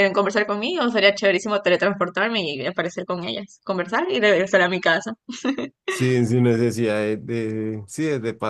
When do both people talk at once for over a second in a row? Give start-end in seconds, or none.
none